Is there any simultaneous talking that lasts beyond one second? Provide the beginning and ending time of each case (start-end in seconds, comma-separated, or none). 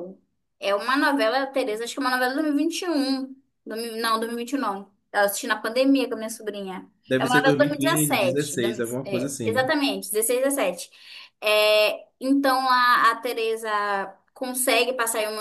7.1-9.7